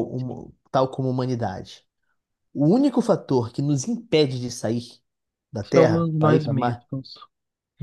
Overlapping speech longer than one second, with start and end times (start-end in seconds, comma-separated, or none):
5.6-6.9